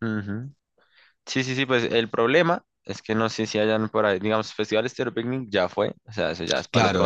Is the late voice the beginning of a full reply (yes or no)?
yes